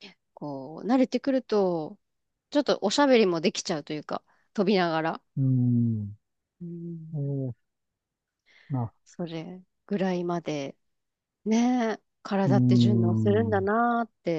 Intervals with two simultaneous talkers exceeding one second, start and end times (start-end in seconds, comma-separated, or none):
12.4-13.7